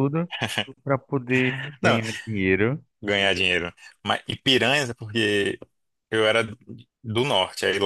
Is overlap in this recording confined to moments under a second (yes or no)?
yes